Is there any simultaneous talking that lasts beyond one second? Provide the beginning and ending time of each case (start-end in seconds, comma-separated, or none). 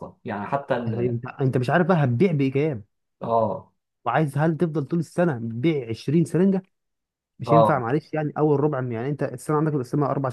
none